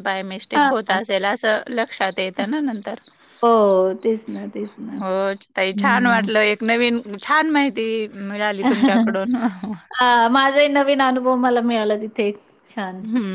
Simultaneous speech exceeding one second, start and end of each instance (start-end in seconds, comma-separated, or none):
none